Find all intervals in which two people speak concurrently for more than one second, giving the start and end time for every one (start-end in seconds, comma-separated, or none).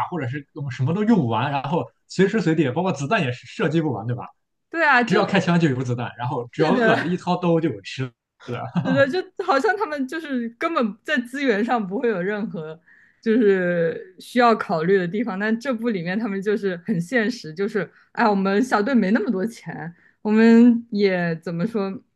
none